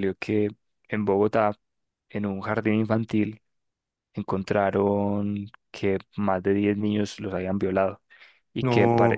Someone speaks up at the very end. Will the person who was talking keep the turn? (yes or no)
yes